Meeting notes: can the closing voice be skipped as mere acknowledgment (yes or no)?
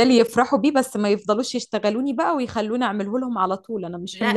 no